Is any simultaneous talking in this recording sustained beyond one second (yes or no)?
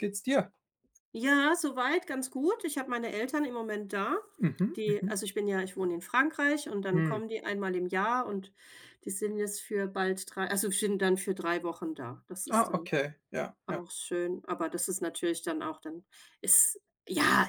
no